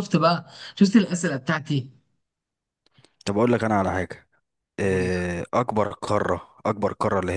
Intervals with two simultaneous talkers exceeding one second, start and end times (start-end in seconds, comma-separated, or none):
none